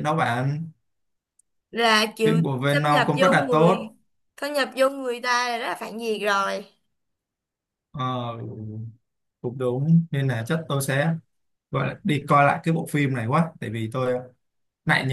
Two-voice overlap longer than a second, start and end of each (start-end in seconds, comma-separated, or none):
2.2-3.9